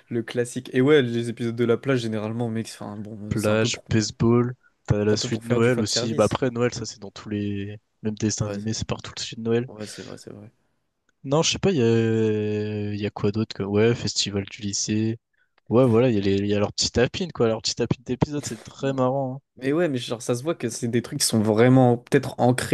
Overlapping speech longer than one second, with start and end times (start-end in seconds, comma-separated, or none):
5.1-6.4